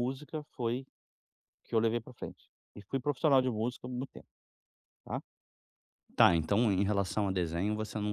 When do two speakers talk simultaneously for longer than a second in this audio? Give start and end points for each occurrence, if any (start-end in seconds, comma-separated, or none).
none